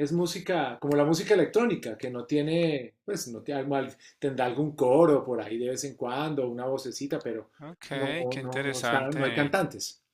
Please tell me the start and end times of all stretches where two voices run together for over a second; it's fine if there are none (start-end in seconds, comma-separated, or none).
7.9-9.5